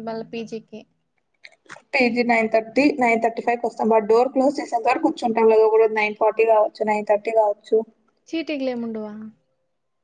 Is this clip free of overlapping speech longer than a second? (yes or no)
yes